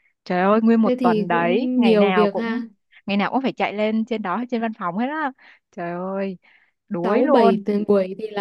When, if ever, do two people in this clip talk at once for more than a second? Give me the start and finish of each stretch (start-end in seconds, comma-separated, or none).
0.8-2.6